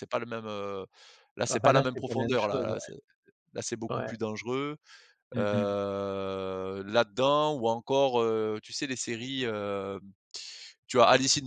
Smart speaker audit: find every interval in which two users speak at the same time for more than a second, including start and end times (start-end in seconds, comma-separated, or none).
1.5-2.8